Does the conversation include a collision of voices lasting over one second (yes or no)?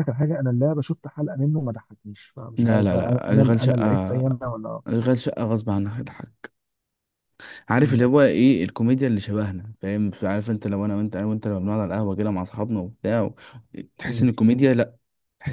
yes